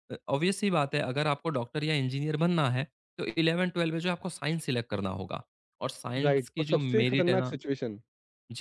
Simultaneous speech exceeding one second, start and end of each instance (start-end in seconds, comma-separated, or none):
6.2-7.5